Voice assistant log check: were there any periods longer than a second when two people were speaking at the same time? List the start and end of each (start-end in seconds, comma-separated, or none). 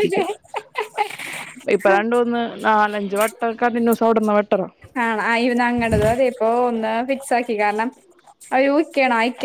none